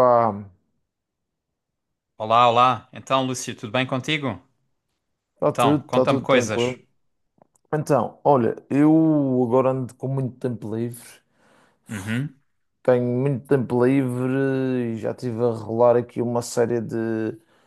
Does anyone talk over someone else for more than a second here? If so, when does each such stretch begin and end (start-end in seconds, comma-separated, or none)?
5.5-6.8